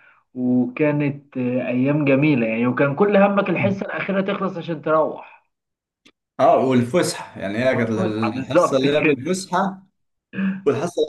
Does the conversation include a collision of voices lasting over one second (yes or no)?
yes